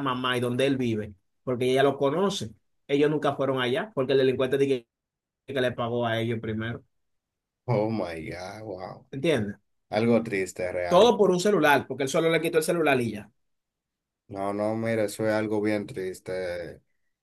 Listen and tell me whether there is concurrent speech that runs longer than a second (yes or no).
no